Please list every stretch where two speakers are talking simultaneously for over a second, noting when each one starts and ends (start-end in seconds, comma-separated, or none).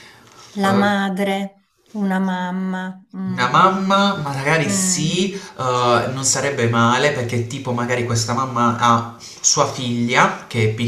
none